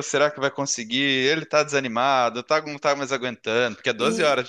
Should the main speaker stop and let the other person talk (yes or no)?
yes